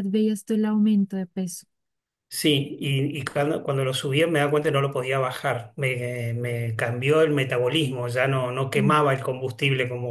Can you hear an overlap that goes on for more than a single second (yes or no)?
no